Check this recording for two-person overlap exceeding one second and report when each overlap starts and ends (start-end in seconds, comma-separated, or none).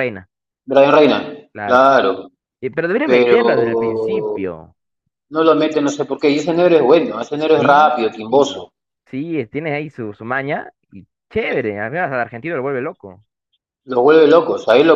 3.0-4.5